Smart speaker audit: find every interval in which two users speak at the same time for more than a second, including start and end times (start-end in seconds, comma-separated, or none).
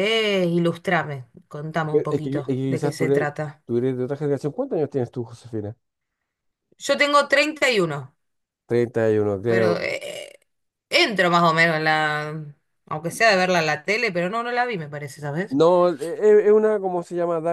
1.9-3.3